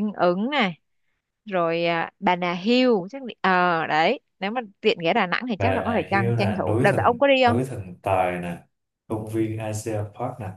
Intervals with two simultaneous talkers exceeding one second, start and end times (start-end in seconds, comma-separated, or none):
5.6-7.6